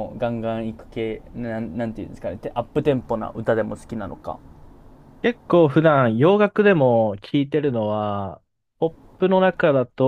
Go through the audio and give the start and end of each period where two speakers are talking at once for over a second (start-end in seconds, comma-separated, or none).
none